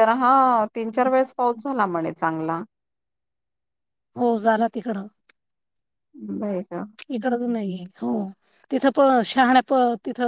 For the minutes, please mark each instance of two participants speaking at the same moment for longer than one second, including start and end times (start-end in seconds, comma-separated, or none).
none